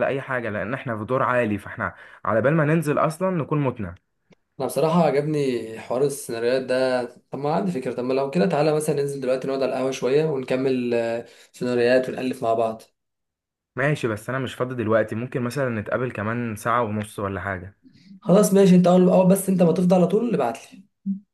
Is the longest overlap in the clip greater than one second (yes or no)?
no